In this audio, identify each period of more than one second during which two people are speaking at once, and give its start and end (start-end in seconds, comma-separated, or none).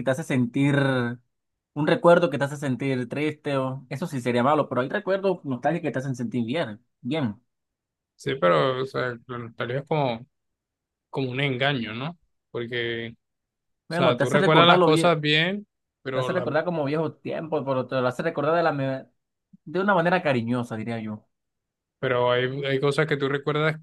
13.9-15.2